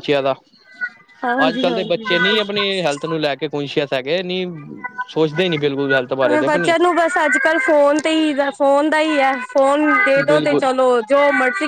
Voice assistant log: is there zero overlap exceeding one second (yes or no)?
no